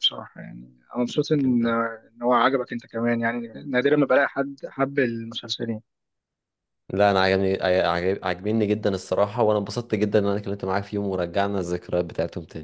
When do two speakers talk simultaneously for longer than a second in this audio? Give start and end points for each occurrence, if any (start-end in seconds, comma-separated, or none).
none